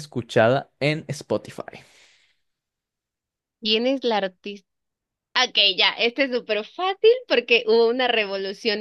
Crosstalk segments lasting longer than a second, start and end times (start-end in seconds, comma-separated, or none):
none